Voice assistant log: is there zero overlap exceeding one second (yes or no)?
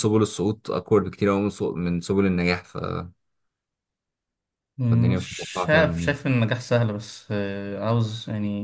no